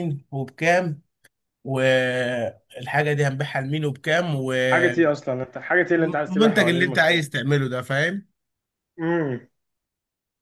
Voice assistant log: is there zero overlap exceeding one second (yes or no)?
no